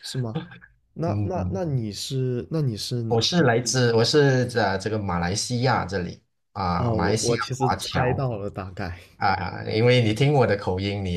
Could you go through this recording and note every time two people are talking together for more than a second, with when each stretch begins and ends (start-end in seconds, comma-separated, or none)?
6.8-8.2